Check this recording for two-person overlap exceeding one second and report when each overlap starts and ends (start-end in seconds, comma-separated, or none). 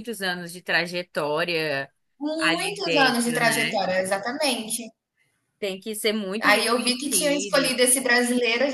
2.5-3.8, 6.4-7.8